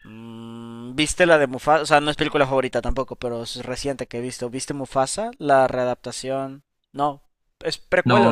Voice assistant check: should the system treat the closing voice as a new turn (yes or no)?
yes